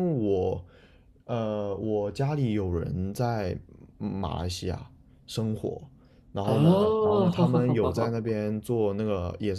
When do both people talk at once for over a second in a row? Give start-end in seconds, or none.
6.4-8.4